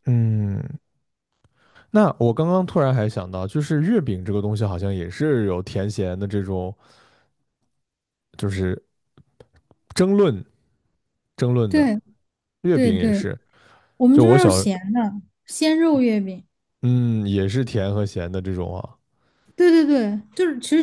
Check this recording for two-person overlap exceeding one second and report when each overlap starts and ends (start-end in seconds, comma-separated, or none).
none